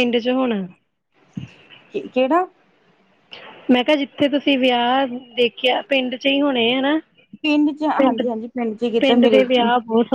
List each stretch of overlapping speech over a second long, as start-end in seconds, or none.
none